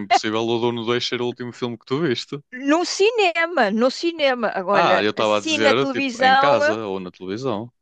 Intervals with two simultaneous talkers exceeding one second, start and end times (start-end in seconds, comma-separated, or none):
4.7-6.8